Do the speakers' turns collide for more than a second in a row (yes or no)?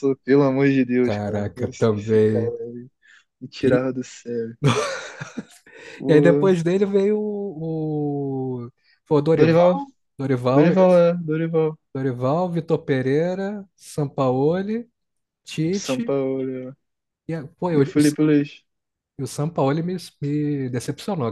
yes